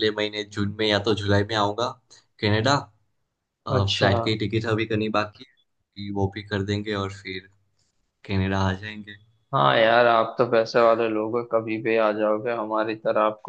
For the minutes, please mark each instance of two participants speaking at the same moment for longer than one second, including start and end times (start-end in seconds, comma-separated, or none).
none